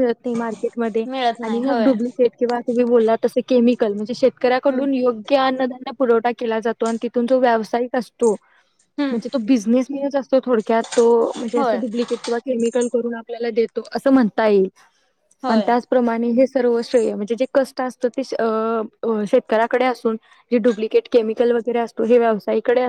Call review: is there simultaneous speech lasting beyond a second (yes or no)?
no